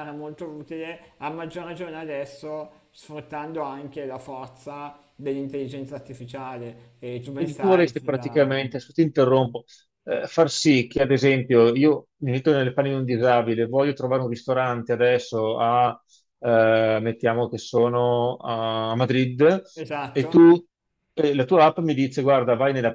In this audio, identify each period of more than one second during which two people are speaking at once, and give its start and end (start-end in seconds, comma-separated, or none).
7.3-8.6